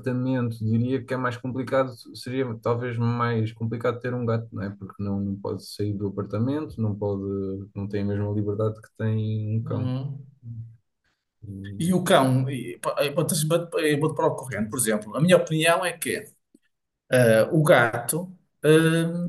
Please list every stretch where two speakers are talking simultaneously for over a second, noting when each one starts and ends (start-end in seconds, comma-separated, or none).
none